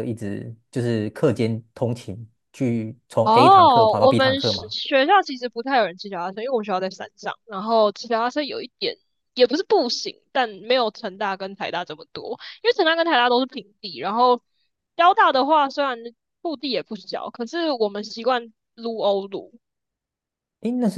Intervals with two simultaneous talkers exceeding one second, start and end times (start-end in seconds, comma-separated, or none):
3.2-4.7